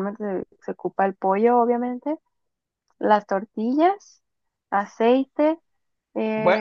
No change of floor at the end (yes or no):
no